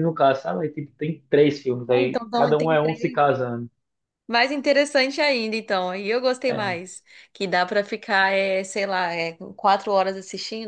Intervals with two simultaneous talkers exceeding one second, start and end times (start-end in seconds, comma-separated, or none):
1.9-3.2